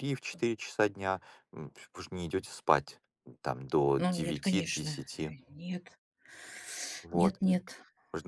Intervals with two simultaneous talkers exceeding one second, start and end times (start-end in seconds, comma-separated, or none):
4.0-5.3